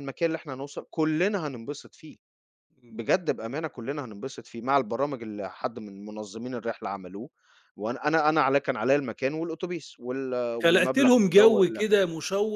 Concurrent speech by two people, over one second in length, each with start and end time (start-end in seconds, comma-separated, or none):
10.6-12.0